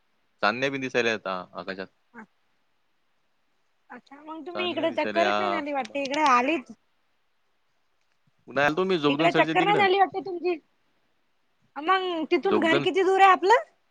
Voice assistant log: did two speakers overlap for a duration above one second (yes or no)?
yes